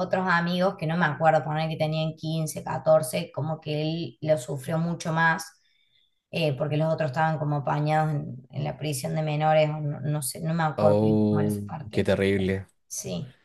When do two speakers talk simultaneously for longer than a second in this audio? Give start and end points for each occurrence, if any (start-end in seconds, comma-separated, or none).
10.8-12.7